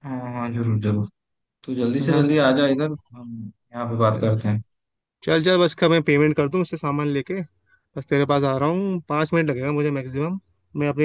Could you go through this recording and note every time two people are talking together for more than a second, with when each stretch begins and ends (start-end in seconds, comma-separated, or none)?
none